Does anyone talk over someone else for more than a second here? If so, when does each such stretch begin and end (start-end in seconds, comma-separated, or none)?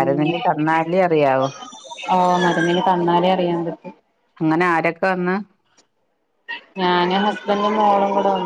none